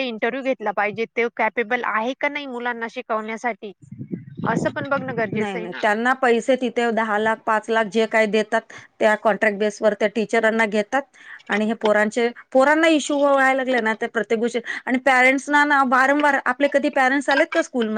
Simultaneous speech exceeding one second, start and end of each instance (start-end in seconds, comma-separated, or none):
none